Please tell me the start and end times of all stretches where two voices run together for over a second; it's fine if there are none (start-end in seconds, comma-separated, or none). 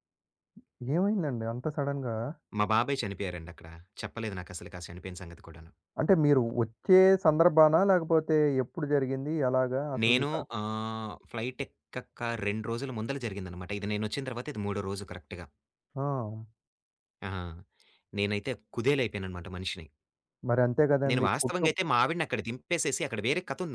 none